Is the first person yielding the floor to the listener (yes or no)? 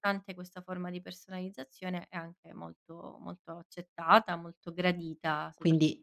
yes